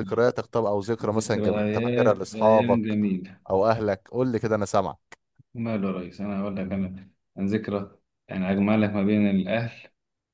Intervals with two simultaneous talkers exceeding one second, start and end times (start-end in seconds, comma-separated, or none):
1.0-3.0